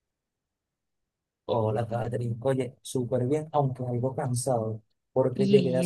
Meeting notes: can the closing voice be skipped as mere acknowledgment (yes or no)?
yes